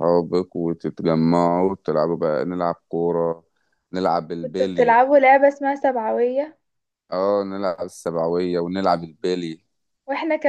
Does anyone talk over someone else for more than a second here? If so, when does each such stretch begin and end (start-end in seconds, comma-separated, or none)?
none